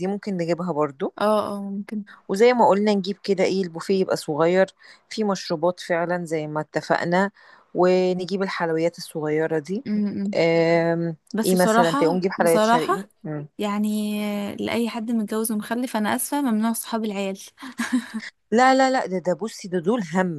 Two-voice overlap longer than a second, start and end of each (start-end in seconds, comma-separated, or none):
11.3-12.9